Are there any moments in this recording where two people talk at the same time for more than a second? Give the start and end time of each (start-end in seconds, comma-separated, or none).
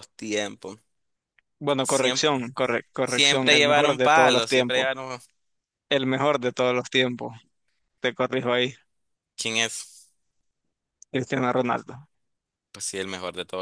3.0-4.9